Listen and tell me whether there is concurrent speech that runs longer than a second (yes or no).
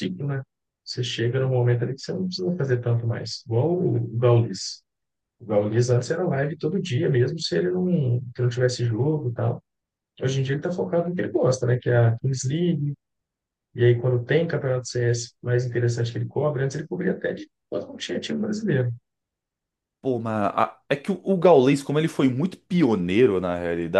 no